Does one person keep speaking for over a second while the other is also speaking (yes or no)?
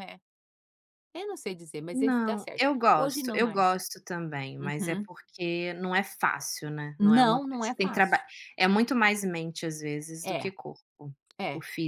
yes